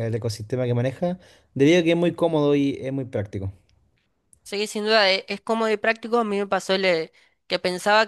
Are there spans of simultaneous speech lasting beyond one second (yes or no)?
no